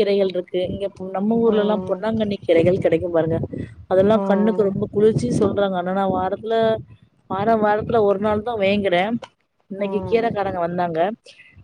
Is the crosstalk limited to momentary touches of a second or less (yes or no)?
yes